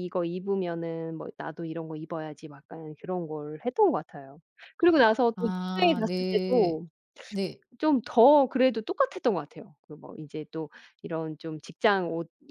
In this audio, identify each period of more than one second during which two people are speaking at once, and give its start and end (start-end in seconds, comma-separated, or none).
5.3-6.8